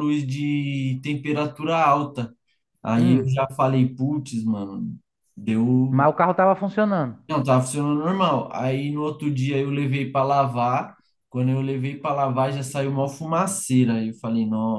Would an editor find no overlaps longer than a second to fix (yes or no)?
yes